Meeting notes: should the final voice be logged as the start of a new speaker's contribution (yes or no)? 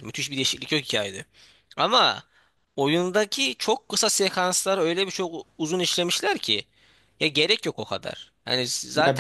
yes